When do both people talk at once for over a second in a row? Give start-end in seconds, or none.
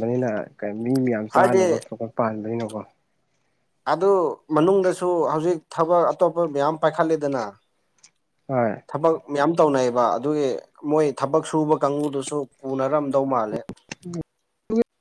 none